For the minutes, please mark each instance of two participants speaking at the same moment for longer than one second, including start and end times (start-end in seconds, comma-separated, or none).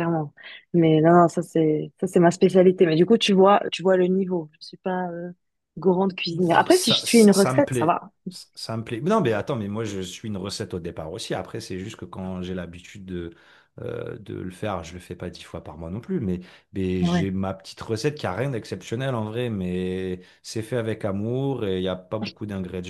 6.7-8.1